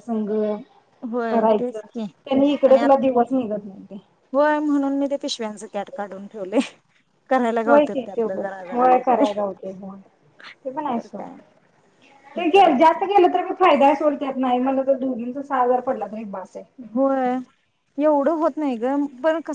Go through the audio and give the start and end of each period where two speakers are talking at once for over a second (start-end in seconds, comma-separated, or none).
7.7-9.2